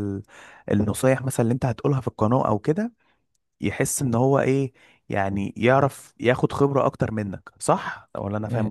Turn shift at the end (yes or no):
yes